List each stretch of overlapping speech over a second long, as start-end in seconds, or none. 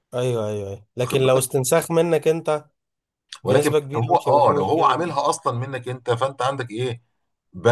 3.4-5.2